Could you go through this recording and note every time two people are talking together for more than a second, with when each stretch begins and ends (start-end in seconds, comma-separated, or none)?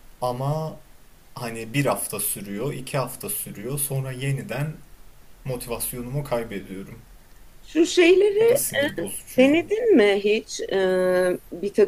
none